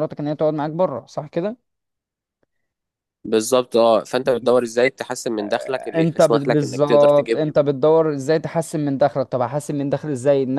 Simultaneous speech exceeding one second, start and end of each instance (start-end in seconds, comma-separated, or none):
6.0-7.5